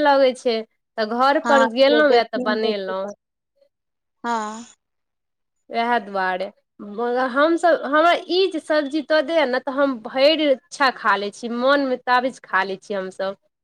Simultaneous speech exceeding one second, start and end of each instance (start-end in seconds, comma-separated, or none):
1.4-3.1